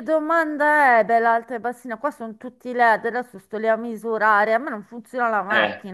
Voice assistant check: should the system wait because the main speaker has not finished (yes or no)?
no